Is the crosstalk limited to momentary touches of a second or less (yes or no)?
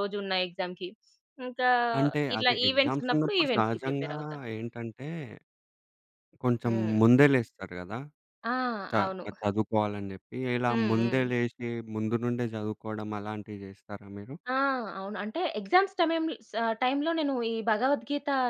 no